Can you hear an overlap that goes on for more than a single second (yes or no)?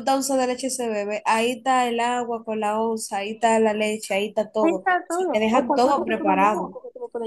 yes